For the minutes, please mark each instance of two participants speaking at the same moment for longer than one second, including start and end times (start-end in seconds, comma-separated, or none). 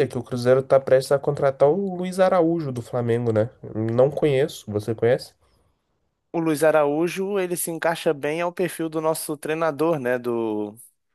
none